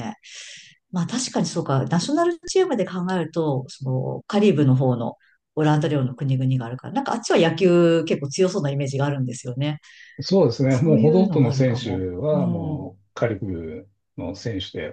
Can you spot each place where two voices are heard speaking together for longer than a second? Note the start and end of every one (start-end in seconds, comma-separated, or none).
10.7-12.8